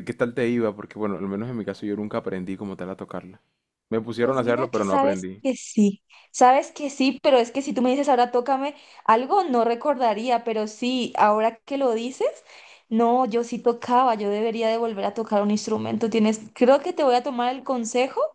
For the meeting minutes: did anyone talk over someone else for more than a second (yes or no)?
yes